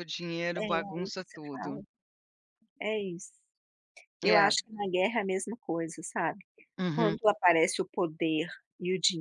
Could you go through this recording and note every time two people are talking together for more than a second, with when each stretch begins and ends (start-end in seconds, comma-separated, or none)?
0.6-1.8